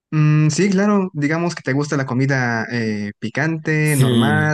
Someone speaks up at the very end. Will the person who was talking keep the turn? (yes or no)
no